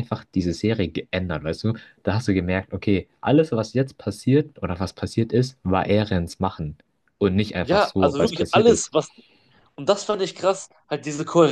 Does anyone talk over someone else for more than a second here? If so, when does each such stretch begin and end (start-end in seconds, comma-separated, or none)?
7.6-8.9